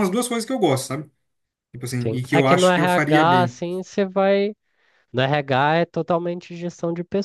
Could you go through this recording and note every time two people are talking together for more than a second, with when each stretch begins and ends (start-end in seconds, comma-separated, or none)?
2.0-3.6